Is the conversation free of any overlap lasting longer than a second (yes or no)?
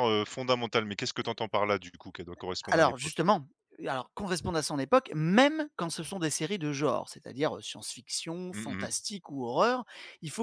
yes